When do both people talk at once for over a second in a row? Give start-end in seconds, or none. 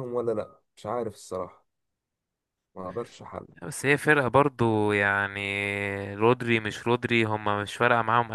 none